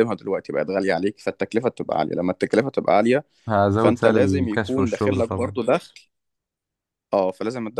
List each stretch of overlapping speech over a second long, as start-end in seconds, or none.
3.8-5.5